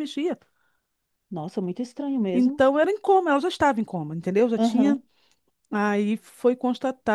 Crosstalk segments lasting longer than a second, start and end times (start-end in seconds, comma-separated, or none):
none